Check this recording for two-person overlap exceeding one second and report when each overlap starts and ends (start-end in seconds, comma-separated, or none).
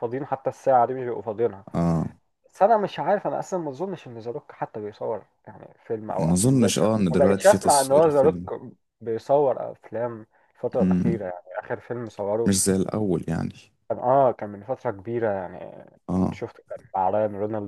6.2-8.4